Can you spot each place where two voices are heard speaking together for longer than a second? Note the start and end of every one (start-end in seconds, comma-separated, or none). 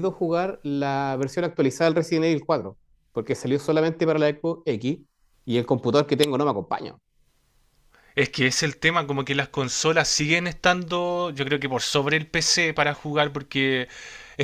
none